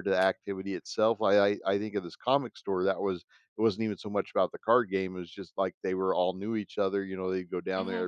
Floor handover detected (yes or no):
no